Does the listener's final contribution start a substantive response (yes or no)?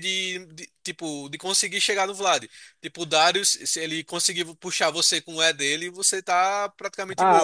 yes